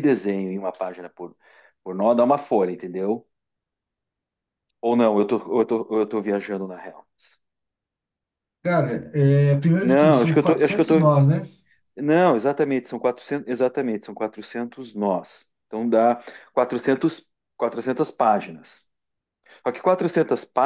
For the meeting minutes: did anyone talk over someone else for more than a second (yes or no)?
yes